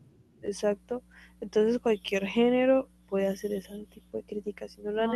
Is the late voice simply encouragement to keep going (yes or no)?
yes